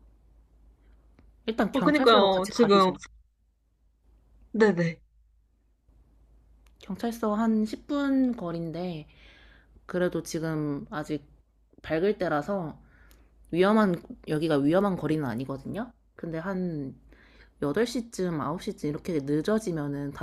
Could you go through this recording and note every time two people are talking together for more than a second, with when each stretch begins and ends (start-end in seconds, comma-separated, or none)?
1.7-2.9